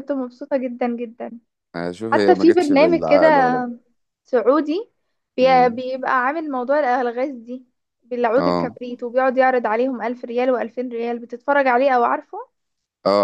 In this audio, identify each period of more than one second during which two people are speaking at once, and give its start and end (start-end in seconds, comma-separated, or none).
2.1-3.6